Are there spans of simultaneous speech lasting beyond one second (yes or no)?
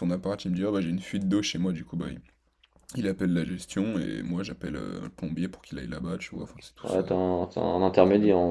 no